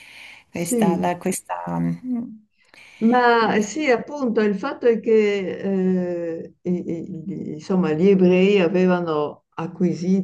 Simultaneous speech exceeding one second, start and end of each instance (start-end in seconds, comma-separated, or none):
none